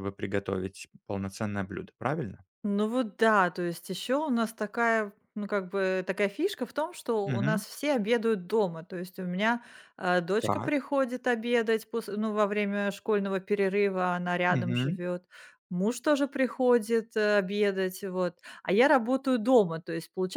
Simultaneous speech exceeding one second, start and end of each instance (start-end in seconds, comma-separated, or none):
none